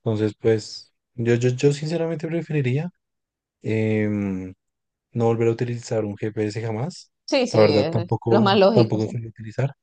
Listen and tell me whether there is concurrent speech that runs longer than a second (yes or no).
yes